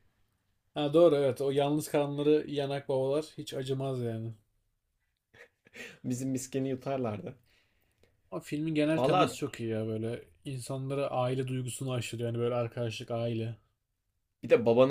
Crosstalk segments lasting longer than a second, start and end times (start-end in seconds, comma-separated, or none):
none